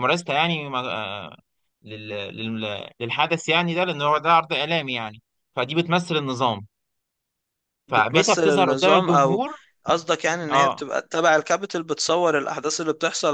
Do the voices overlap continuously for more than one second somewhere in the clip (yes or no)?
yes